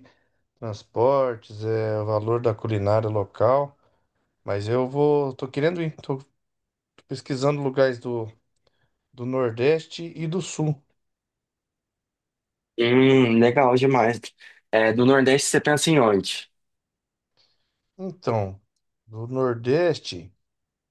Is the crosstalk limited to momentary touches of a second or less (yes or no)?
yes